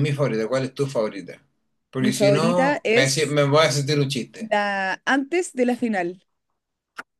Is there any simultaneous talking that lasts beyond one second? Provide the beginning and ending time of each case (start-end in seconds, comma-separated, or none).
2.0-3.4